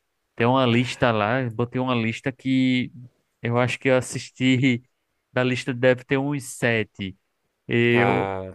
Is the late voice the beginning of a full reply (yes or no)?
no